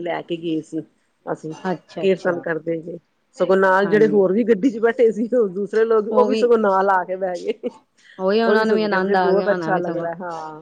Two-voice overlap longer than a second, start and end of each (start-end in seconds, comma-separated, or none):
8.4-10.1